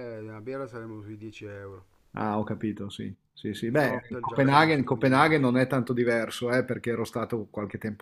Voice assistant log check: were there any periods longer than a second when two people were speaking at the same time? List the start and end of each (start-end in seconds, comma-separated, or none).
3.7-5.5